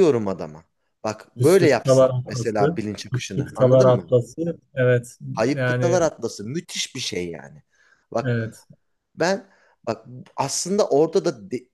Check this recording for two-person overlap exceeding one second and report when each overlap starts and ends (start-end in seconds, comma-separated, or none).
1.4-4.1